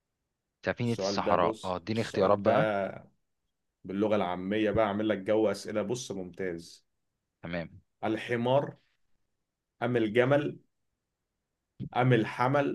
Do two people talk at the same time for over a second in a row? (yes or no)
yes